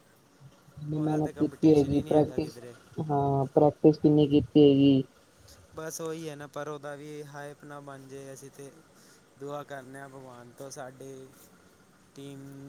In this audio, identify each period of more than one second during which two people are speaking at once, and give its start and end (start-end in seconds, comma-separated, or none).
0.9-2.6